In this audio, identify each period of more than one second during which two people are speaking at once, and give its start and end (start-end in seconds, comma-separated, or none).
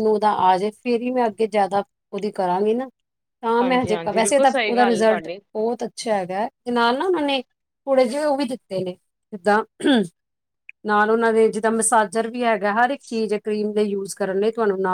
3.6-5.4